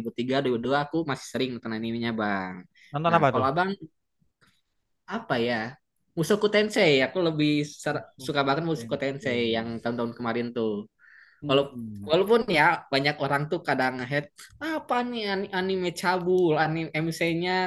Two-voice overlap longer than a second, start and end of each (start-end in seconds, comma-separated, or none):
7.9-9.7